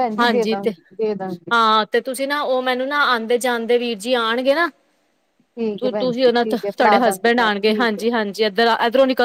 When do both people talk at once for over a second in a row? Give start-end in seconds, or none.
5.8-8.0